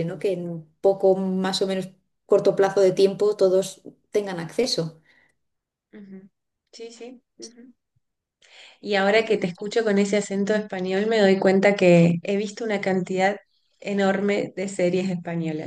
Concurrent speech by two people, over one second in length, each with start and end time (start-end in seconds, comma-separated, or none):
none